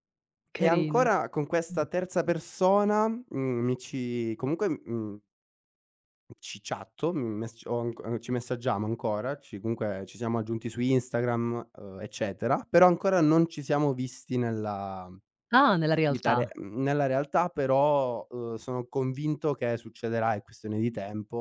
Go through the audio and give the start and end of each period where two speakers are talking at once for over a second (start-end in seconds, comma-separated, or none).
none